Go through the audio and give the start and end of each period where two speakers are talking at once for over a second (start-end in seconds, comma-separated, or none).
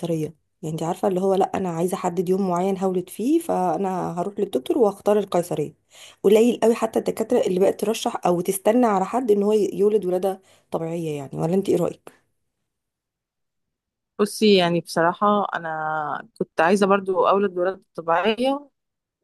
none